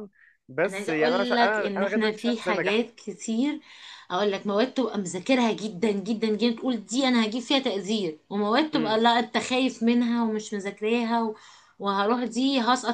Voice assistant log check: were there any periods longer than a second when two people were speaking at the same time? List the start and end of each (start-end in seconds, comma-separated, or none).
0.6-2.8